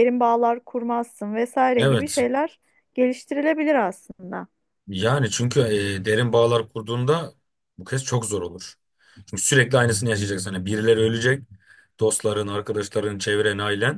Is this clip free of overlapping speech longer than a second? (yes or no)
yes